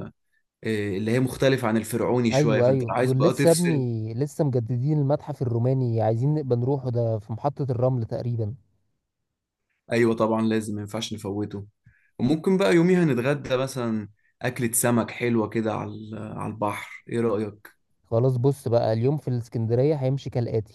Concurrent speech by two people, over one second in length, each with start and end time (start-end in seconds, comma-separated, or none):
2.3-3.9